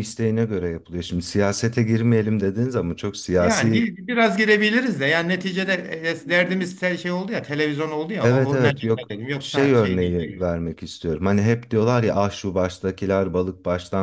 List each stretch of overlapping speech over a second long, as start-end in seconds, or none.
8.2-10.5